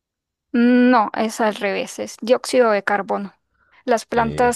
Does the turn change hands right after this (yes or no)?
no